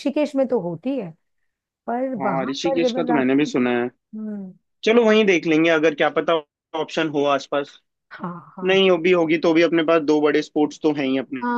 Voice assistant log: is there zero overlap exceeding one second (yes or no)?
no